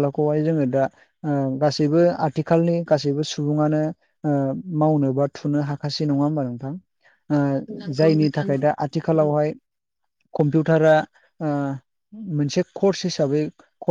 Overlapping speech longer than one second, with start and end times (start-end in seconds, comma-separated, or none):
7.8-9.3